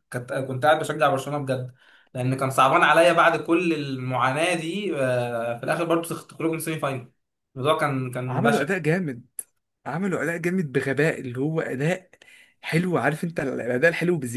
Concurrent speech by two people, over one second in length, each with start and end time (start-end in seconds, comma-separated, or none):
none